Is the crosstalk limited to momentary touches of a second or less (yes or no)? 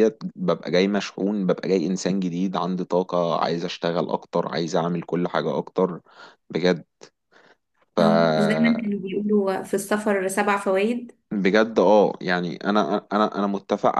yes